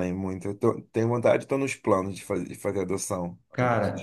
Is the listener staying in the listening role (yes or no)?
no